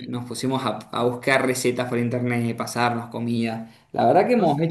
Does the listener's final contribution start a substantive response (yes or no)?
no